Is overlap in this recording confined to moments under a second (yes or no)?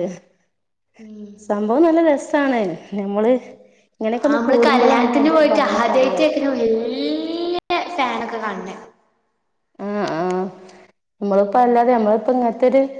yes